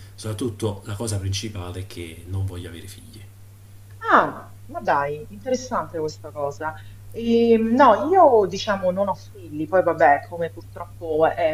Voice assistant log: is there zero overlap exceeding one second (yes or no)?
yes